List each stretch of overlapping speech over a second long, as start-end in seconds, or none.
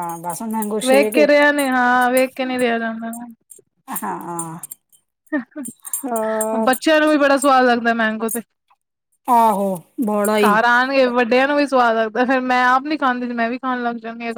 none